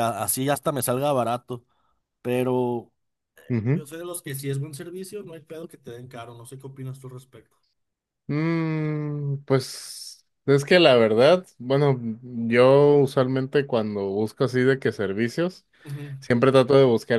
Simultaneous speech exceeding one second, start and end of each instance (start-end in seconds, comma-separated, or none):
none